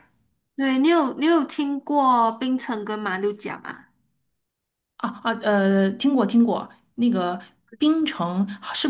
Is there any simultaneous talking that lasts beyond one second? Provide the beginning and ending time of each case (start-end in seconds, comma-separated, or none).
none